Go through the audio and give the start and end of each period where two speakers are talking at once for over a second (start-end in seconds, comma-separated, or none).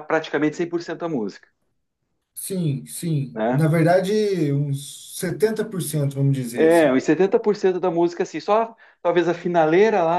none